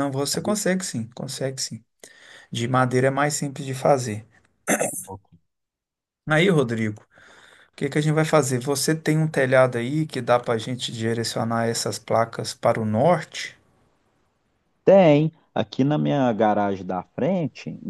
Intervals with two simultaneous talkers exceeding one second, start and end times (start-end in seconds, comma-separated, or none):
none